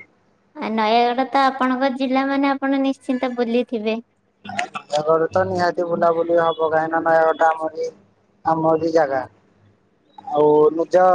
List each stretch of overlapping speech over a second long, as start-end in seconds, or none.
none